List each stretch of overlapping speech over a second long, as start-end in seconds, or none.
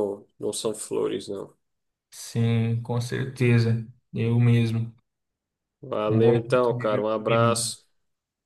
6.1-7.7